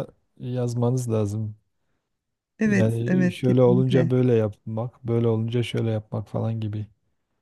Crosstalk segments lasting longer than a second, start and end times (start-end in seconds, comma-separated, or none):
2.6-4.1